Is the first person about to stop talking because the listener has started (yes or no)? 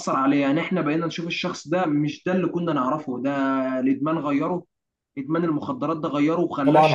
yes